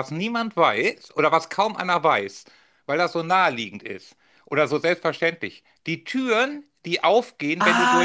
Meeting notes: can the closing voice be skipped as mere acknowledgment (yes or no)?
no